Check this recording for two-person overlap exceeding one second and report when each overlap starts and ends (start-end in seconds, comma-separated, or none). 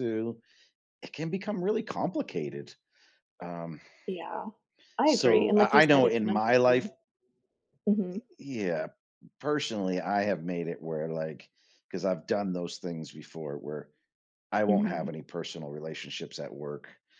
5.0-6.9